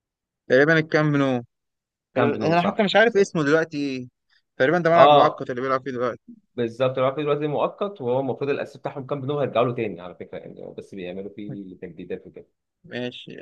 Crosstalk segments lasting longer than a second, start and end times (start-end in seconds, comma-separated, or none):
2.2-3.4